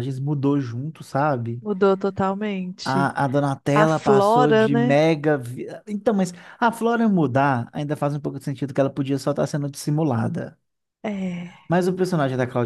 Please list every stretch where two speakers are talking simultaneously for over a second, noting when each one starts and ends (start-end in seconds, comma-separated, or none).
3.7-5.0